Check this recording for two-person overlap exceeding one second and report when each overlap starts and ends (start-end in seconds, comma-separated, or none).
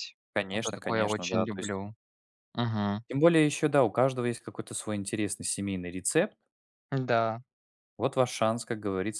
0.5-1.8